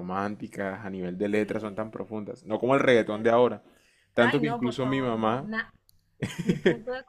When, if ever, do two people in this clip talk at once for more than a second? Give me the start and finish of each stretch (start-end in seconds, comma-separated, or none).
4.2-5.5